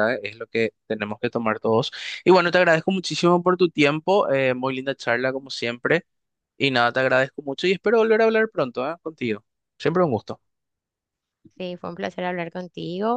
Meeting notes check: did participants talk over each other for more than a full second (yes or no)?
no